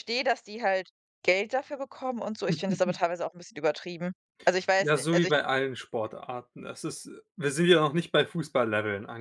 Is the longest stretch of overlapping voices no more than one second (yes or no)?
yes